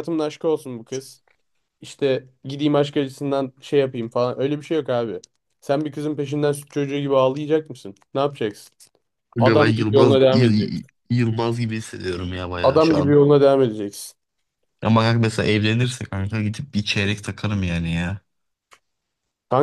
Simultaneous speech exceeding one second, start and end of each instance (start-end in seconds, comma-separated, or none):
9.4-10.8